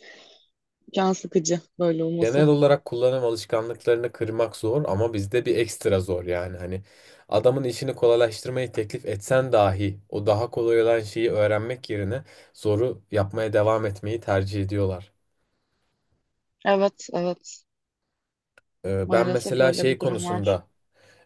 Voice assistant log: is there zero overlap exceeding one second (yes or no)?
no